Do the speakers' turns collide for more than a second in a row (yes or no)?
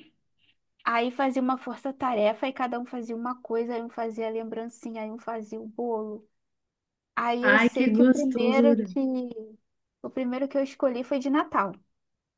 yes